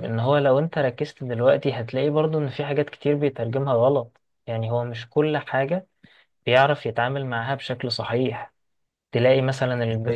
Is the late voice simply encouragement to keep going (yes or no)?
yes